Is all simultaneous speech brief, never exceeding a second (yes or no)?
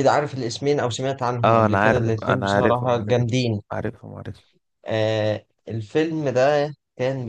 no